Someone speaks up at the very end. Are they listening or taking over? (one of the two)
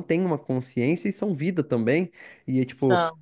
listening